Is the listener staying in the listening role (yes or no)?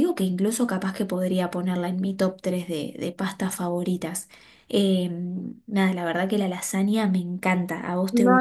no